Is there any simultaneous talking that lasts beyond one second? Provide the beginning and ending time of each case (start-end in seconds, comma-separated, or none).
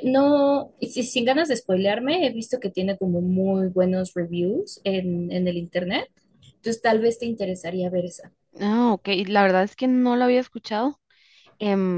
none